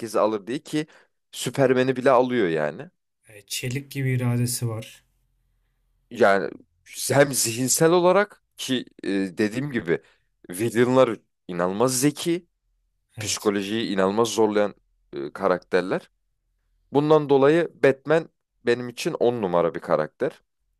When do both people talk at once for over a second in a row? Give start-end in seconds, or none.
none